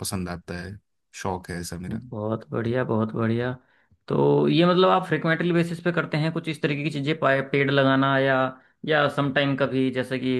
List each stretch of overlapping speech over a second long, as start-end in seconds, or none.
none